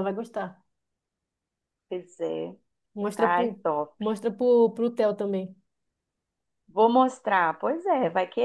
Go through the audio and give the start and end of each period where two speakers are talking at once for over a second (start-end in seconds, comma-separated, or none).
none